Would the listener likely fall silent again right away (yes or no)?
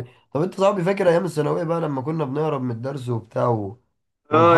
no